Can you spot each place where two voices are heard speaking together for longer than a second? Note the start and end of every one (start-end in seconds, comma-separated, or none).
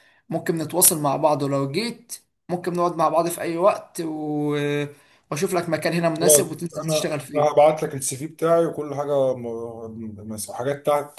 6.2-7.7